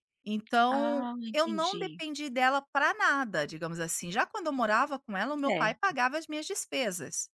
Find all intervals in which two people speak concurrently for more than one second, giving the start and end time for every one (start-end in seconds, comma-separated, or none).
0.7-2.0